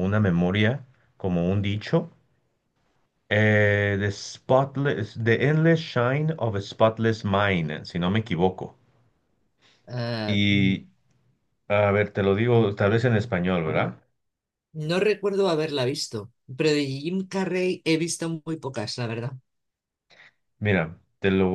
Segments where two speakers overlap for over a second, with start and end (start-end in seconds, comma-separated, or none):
none